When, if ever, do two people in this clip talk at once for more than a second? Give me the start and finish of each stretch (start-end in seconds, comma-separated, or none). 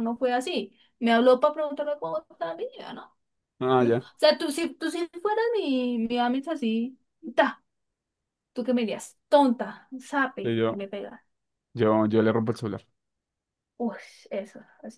none